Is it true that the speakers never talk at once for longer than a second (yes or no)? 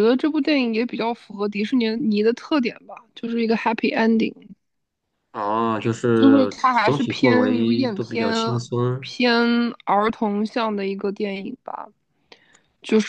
no